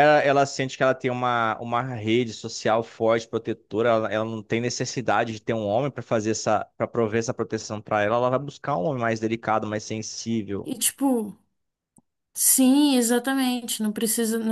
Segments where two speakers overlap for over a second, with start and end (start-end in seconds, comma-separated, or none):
none